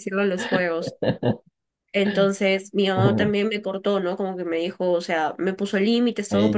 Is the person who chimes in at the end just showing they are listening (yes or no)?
no